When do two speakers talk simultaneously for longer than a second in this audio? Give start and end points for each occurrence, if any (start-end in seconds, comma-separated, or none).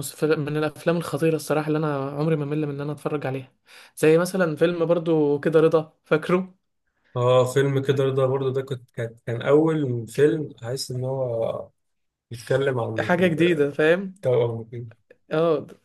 none